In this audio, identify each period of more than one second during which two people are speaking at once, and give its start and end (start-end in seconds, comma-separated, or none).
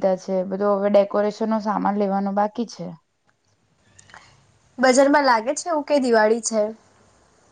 none